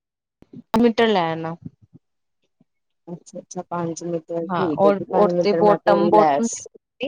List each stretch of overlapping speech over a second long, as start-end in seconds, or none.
4.5-6.5